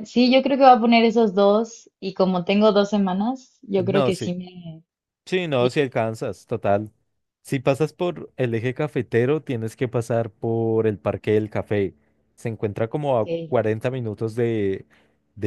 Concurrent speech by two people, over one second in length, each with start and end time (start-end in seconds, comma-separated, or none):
none